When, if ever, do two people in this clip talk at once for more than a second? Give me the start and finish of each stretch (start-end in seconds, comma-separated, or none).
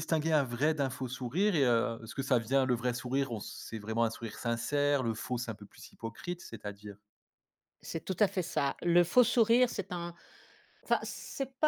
none